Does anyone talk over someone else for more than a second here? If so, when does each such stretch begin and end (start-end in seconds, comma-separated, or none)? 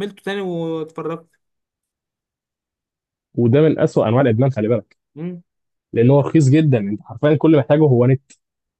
none